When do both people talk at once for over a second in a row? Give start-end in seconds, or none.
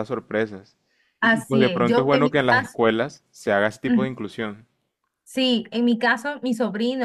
1.2-2.8